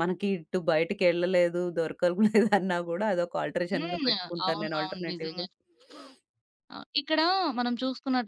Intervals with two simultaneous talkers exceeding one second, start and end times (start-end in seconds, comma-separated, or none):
3.7-5.5